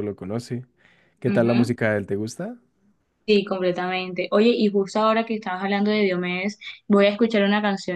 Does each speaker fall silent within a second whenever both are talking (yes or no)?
yes